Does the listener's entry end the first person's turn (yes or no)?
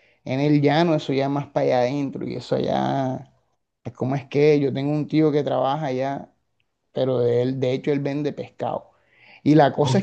no